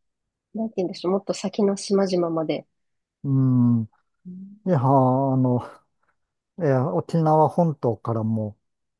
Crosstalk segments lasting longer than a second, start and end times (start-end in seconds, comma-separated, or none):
none